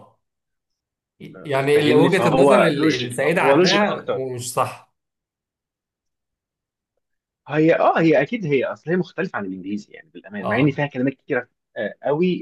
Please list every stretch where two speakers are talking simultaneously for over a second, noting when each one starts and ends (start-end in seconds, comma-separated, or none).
1.4-4.2